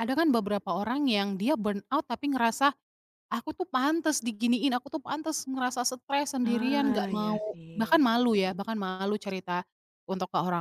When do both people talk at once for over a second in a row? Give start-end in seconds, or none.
6.4-8.0